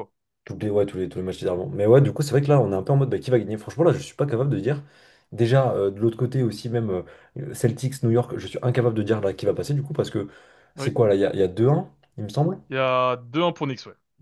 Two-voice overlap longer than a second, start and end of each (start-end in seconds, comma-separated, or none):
none